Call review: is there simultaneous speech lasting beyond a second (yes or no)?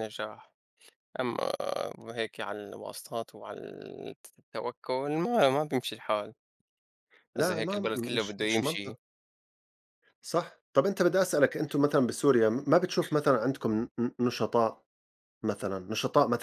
yes